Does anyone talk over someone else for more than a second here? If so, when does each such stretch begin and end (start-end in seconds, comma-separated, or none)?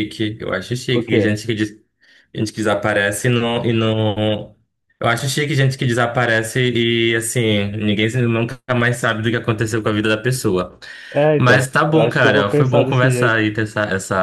11.4-13.4